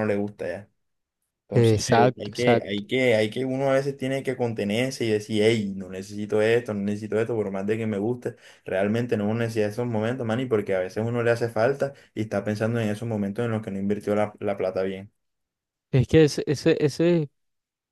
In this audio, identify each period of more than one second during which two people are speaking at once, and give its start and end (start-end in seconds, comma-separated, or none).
1.5-2.8